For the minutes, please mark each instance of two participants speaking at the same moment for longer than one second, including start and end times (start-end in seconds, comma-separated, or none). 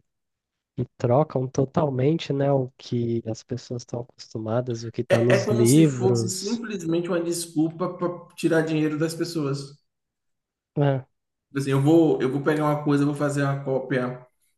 5.1-6.6